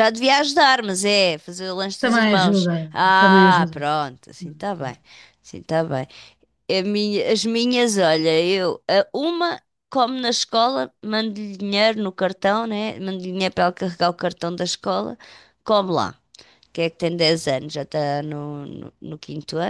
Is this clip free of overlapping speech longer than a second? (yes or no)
no